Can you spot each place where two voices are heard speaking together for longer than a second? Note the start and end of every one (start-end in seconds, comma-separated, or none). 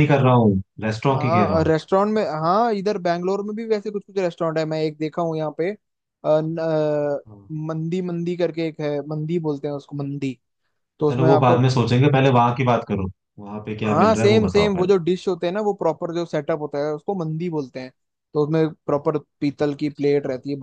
13.8-15.1